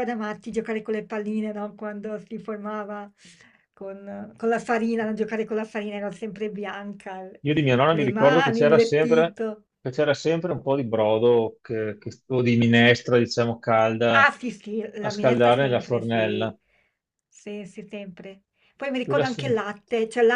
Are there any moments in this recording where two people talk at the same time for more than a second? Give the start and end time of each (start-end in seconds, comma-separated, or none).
7.9-9.4, 15.0-16.6